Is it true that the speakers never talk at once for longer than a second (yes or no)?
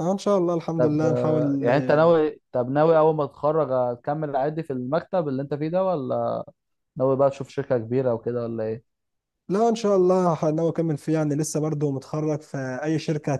no